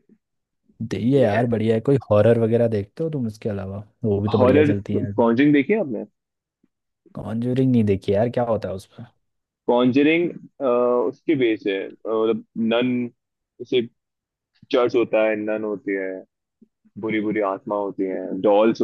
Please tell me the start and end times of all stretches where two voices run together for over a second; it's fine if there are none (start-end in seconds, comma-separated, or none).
none